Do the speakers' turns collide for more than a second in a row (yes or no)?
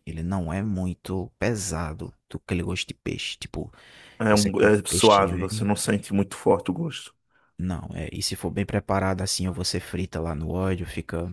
yes